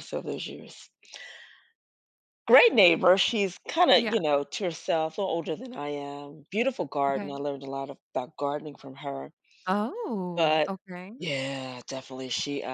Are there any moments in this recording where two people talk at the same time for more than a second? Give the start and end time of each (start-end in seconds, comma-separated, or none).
none